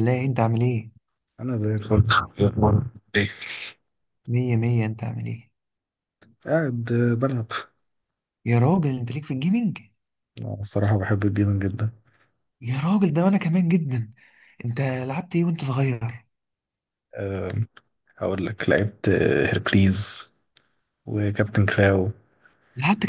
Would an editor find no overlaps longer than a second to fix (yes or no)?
yes